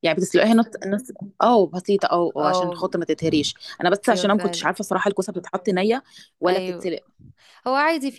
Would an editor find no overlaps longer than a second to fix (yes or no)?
yes